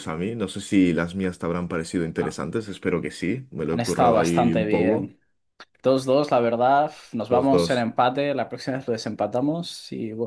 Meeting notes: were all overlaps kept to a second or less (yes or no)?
no